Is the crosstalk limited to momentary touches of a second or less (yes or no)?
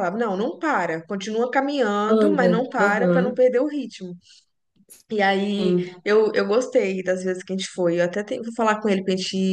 no